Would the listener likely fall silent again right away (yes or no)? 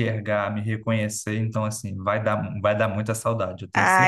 no